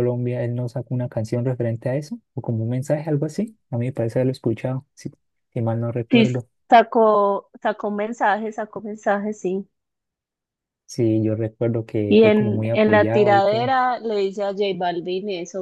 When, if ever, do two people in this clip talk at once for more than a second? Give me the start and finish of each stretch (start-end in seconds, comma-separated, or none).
12.1-13.7